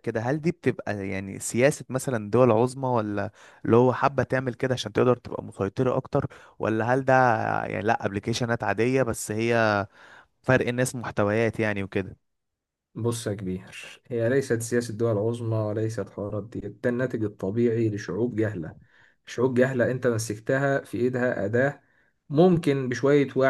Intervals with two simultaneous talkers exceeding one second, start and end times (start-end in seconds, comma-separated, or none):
none